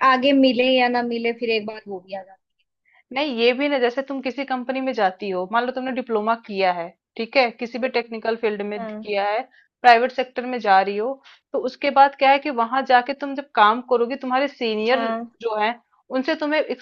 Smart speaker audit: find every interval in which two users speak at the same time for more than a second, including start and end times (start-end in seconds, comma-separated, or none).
none